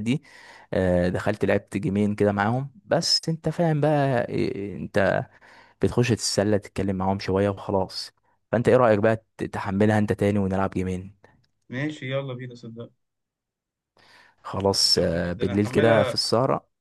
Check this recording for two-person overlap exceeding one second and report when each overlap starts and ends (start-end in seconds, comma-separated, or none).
15.0-16.2